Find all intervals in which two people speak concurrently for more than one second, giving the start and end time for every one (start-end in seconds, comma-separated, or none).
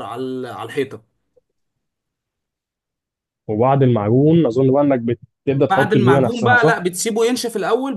5.5-6.8